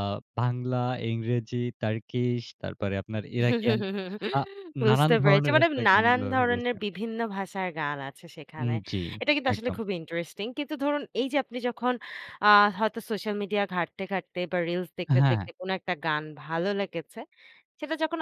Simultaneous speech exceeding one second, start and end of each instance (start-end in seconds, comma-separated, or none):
4.9-6.7